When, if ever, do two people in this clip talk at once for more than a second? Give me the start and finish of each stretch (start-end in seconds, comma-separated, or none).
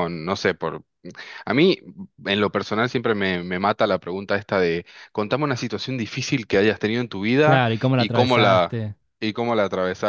7.4-8.8